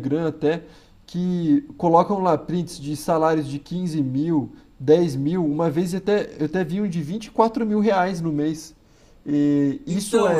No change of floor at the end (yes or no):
yes